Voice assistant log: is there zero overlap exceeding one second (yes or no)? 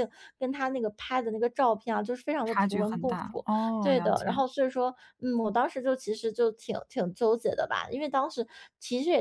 no